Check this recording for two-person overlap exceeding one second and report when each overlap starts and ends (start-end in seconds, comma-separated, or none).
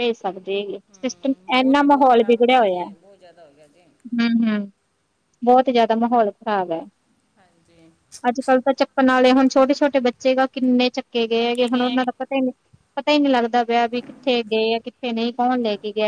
1.5-2.8